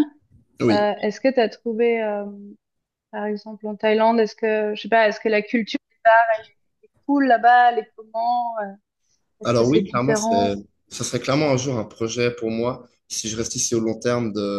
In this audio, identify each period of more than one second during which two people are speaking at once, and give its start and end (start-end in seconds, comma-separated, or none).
9.4-10.6